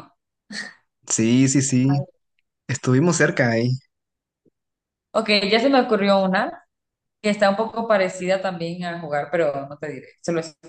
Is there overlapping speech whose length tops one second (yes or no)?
no